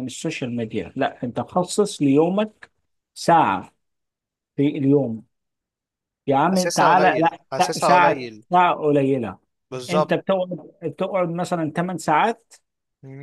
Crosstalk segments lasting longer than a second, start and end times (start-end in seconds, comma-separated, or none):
6.5-8.4